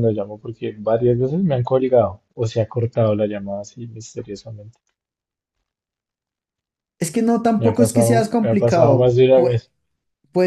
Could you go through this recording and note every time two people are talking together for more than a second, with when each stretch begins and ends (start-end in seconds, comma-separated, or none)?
7.6-9.6